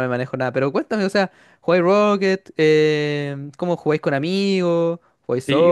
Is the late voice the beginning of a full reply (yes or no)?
yes